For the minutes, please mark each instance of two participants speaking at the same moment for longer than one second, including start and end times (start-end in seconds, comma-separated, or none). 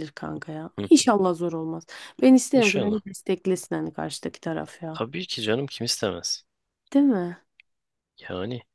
none